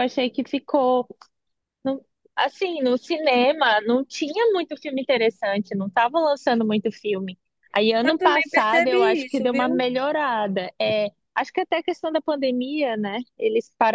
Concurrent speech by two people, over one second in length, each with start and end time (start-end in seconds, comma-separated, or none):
8.0-9.8